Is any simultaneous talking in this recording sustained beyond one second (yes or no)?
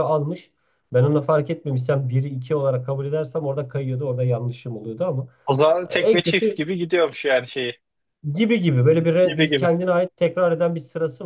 no